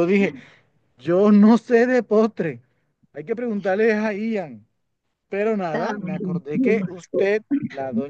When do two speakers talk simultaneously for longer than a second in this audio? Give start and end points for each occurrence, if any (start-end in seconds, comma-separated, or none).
5.6-7.3